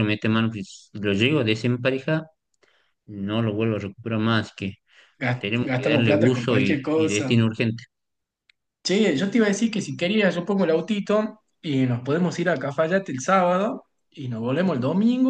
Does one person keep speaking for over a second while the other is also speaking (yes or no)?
yes